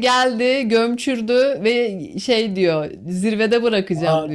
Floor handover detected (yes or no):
yes